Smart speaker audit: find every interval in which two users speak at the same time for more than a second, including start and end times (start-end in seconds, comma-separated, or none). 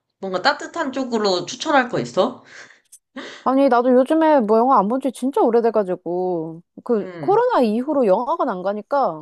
none